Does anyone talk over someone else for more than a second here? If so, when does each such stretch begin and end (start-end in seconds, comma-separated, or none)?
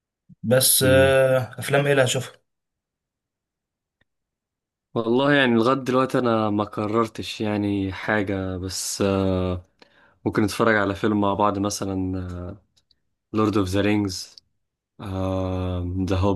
none